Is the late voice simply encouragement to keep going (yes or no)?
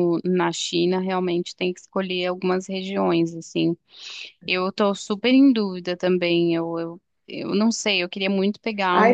no